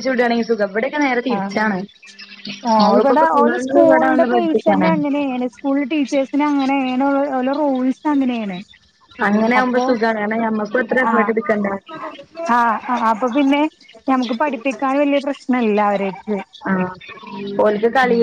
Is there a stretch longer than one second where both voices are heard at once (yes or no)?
yes